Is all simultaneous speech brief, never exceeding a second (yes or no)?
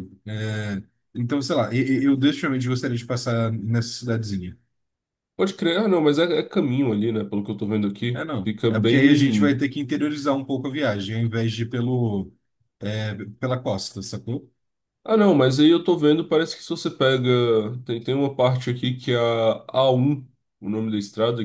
no